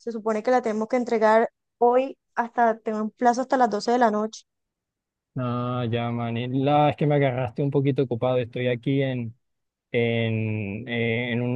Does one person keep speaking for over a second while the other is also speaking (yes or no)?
no